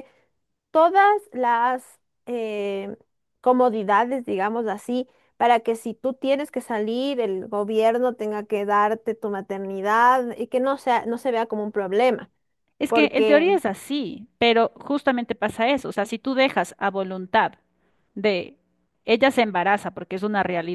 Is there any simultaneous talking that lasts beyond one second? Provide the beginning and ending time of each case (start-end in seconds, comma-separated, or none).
none